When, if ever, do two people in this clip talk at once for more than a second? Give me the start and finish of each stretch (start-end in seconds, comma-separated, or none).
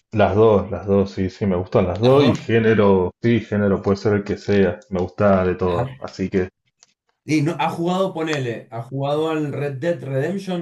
none